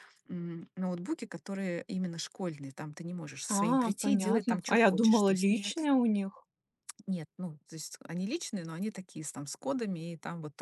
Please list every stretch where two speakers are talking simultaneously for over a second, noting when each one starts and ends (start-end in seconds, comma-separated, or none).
3.5-5.8